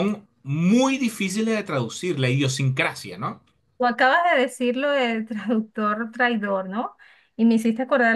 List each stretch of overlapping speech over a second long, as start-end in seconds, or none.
none